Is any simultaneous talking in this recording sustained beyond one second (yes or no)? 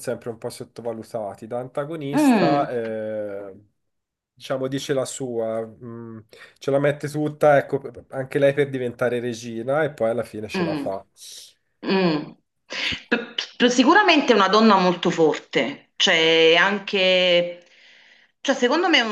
no